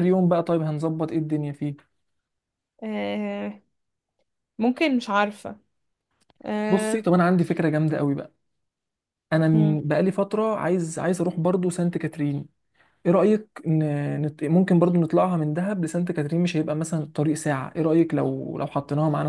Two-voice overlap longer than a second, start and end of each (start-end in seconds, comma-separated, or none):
none